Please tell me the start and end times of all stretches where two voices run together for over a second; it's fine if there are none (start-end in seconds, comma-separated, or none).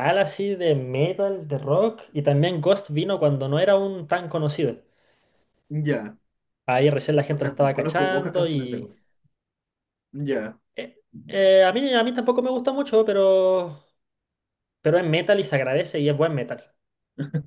7.3-8.9